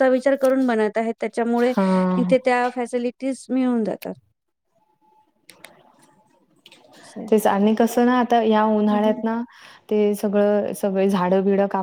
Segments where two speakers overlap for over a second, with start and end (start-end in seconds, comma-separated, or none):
none